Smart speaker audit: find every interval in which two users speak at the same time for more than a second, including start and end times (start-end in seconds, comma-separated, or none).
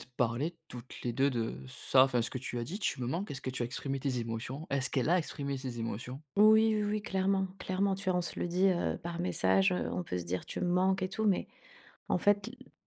none